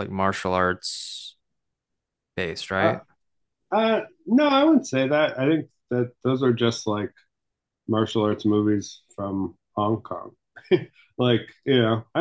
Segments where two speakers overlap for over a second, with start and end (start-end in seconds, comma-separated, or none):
none